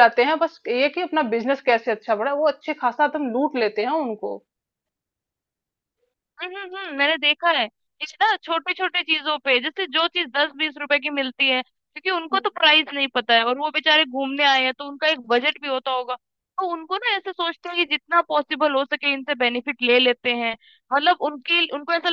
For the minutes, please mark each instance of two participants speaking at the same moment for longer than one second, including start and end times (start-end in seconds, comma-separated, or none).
none